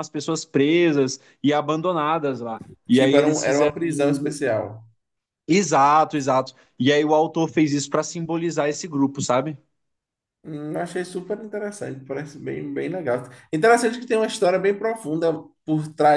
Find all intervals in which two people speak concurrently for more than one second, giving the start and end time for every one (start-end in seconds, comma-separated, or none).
2.9-4.4